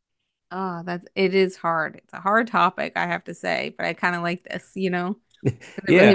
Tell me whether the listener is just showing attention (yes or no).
no